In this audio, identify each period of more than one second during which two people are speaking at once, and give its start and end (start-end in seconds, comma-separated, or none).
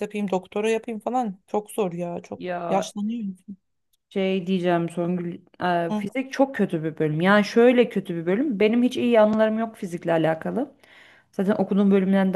none